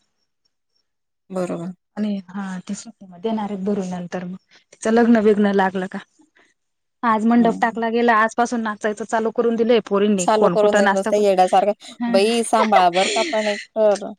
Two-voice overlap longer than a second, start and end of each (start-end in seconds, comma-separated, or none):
10.2-12.0